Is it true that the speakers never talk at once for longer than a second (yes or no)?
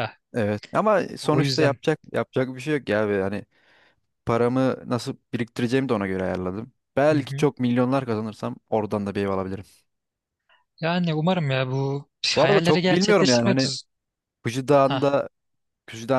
no